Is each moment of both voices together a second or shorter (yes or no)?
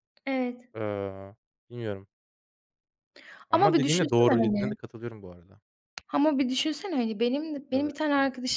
no